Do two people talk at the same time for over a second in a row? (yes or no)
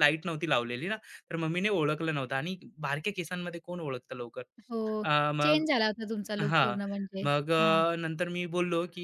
no